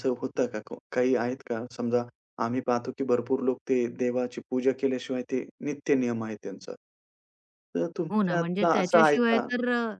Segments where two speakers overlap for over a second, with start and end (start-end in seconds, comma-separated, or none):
8.1-9.5